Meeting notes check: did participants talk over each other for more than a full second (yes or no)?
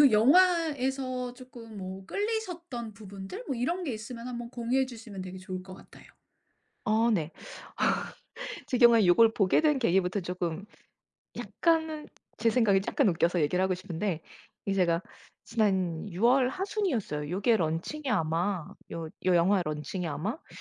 no